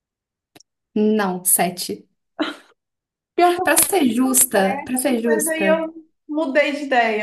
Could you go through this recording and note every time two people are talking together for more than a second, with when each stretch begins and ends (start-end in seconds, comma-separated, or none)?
3.6-5.8